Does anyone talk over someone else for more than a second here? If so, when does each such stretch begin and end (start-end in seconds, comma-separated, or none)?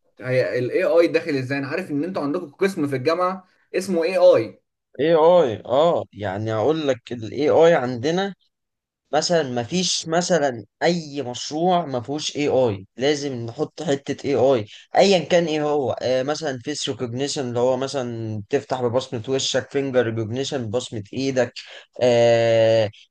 none